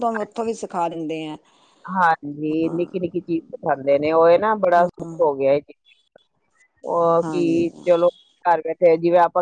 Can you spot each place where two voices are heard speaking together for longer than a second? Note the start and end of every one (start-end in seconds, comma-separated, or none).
none